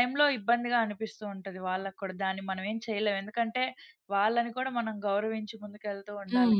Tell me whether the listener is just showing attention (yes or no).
no